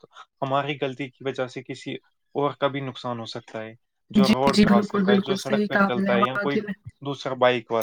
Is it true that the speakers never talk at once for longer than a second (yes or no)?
no